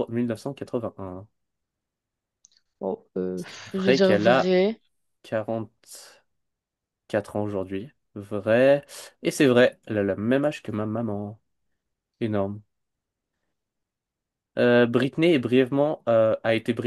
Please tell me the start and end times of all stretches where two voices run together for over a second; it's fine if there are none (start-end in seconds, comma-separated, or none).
3.4-4.6